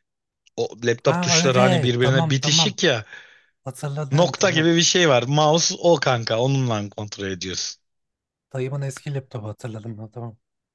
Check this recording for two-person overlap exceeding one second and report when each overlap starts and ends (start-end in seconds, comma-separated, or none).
1.0-2.8